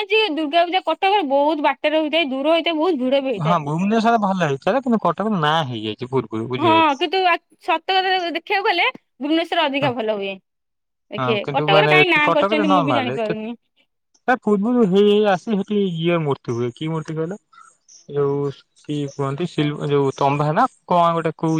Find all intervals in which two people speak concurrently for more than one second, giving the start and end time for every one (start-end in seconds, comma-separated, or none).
11.2-13.1